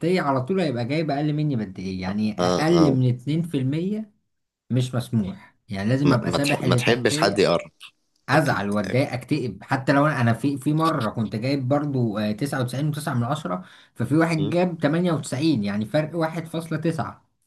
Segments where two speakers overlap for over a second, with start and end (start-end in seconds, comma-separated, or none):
6.0-7.5